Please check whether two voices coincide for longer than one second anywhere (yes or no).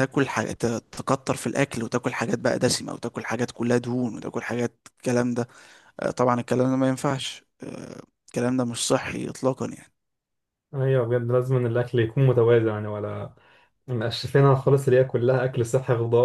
no